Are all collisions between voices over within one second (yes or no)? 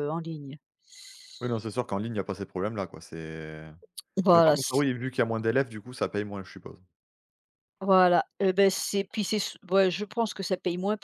yes